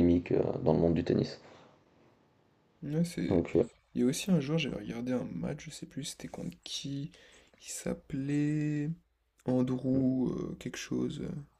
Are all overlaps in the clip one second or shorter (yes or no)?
yes